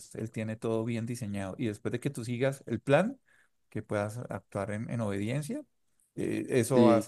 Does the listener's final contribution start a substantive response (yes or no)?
no